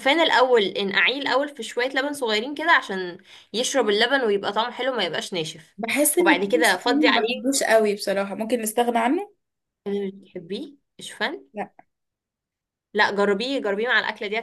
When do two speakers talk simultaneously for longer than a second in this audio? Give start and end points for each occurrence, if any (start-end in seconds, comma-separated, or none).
6.2-7.6